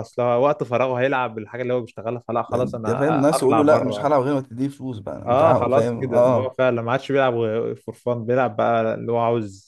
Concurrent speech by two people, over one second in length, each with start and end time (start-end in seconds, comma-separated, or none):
2.5-4.1, 5.3-6.5